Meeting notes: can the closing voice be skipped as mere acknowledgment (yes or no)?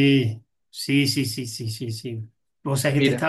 yes